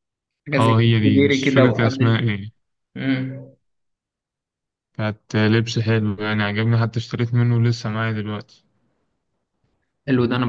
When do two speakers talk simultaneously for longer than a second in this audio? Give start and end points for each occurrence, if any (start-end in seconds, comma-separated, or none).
0.6-2.2